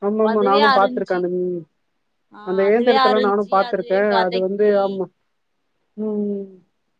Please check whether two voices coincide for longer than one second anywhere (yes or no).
yes